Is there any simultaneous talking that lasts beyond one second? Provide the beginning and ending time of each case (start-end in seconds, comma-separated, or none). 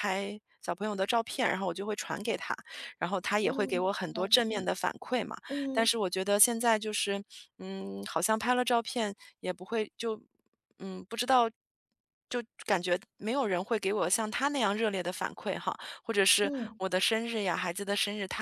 3.4-4.7